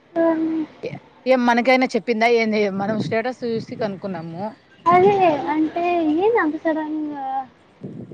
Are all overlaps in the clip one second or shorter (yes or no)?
yes